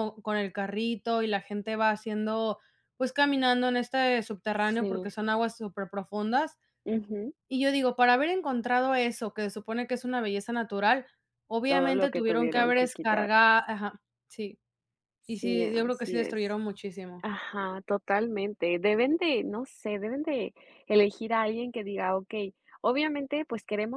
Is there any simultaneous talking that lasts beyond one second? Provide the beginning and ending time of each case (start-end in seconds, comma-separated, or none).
11.7-13.3, 15.2-16.6